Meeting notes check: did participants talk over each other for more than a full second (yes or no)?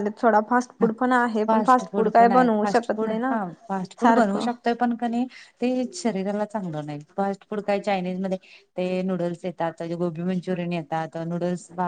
no